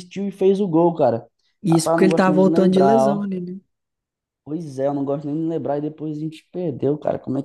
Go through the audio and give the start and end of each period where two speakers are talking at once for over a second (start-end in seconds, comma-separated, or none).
1.7-3.3